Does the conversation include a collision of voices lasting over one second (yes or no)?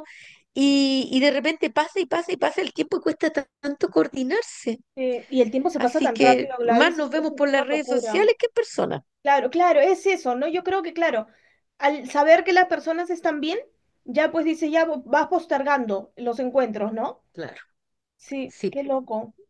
yes